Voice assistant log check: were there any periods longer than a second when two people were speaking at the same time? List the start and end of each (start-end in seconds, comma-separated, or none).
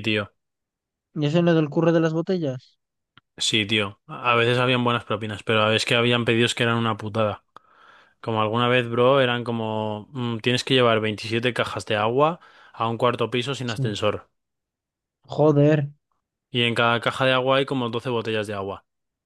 none